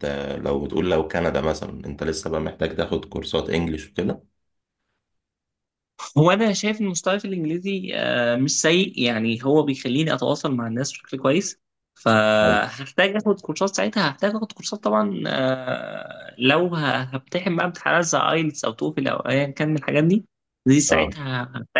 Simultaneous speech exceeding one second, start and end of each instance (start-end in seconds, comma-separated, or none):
none